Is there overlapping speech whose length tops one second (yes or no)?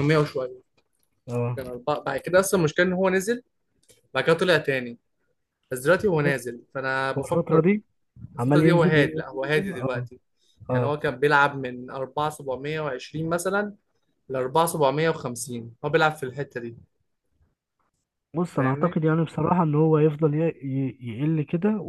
yes